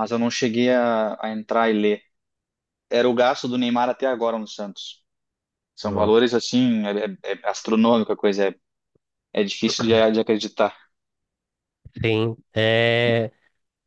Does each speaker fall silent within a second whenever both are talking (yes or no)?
yes